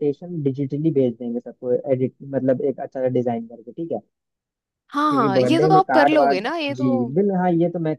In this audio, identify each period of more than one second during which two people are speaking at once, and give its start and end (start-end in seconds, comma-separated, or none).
5.1-7.2